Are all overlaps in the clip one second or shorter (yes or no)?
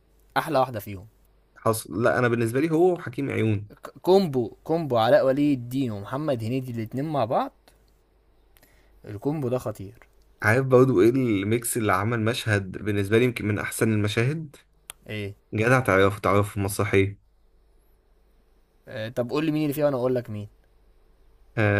yes